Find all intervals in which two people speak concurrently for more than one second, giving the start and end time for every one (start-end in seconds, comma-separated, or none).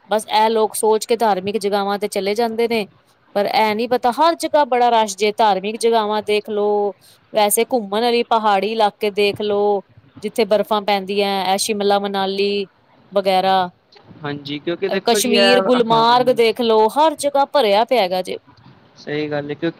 15.1-16.4